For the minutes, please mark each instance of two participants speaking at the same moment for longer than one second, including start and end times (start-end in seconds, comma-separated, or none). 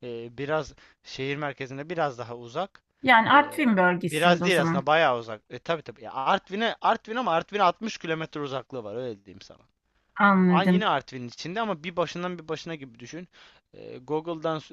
3.3-4.9